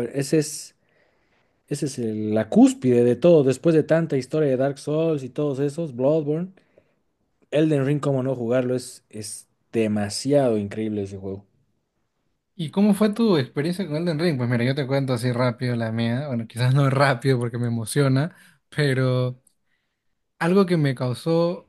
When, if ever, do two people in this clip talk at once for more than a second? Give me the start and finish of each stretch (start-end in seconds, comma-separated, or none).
none